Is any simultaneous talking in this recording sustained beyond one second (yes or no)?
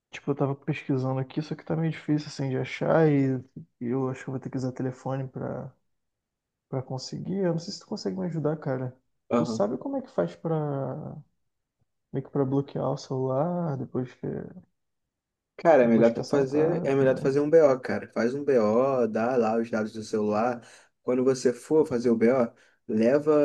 yes